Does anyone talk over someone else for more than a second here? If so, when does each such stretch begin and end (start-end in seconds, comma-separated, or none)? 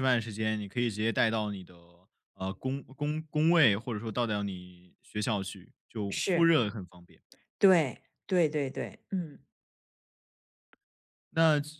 none